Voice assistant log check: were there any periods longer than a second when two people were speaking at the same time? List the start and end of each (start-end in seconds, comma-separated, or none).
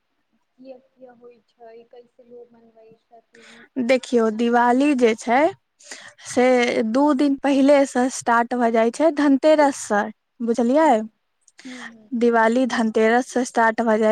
none